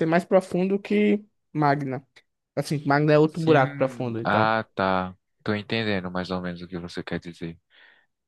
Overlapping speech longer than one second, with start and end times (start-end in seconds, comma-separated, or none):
3.2-4.6